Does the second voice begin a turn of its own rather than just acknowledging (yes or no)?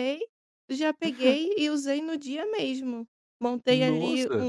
no